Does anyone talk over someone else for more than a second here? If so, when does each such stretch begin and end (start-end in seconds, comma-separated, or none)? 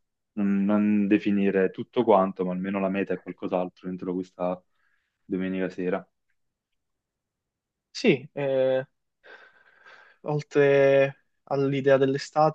none